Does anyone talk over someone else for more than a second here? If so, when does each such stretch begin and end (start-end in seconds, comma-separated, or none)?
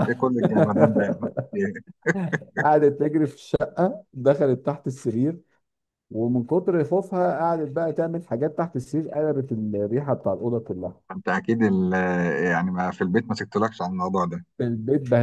none